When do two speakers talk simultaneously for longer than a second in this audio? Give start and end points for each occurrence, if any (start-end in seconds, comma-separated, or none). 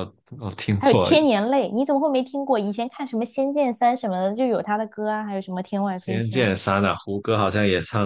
none